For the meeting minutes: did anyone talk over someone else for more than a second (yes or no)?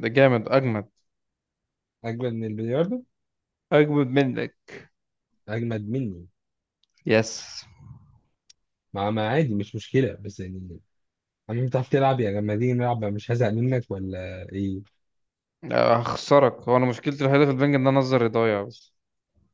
no